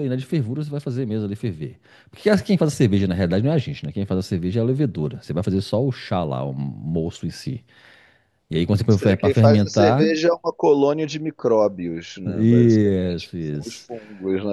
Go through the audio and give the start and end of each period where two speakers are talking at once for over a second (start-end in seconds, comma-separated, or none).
8.9-10.2, 12.2-13.9